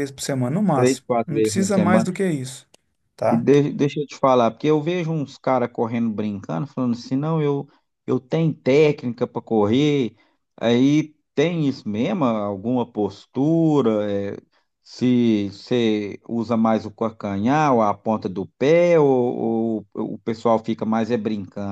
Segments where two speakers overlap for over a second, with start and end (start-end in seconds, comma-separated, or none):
0.7-2.1